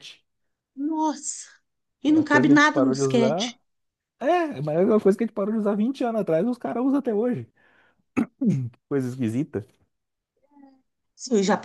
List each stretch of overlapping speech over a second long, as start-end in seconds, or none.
2.1-3.6